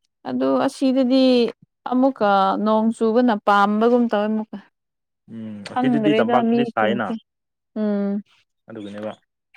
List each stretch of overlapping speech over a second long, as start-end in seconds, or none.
5.7-7.1